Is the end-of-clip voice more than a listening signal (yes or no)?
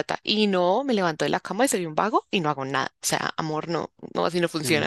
no